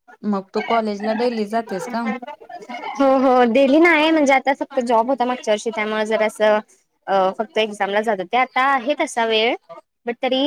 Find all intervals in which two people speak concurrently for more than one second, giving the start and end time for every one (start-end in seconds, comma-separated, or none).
none